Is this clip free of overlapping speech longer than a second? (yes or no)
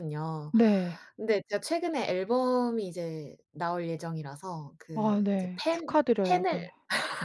no